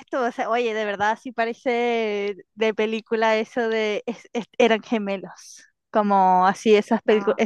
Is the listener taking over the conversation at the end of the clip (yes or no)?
no